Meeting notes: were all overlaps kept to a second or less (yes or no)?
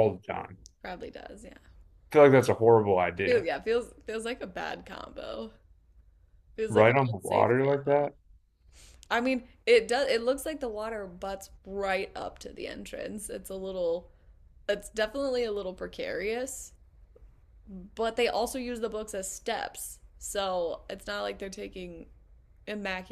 no